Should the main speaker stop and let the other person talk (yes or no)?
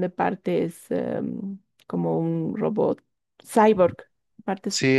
yes